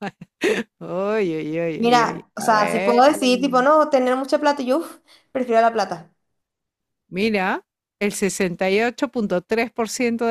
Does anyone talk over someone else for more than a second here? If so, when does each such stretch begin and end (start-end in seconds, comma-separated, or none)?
1.8-3.0